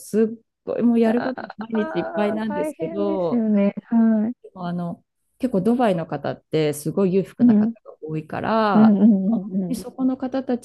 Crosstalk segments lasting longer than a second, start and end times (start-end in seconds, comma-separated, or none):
1.7-3.5